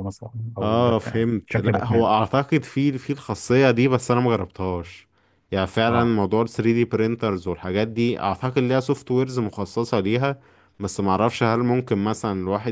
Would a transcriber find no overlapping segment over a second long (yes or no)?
no